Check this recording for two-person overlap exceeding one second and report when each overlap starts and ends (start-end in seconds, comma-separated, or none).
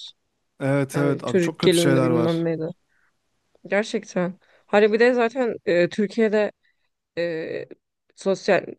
0.9-2.5